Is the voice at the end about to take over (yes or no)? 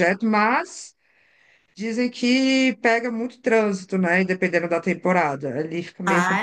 yes